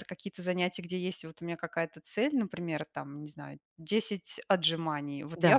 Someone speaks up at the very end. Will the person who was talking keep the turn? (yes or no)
no